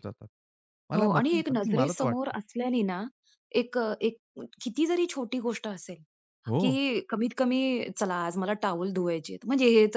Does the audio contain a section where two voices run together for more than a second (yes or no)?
yes